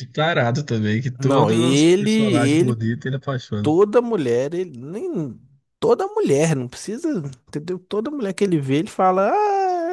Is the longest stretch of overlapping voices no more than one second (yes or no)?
no